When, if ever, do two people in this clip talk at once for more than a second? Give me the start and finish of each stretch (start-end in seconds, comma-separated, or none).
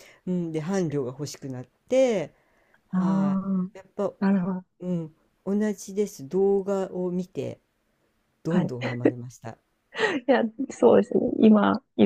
none